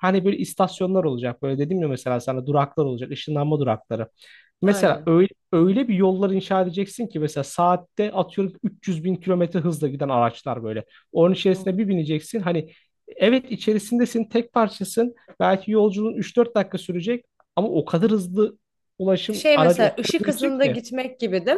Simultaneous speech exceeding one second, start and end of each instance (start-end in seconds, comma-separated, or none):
19.3-20.8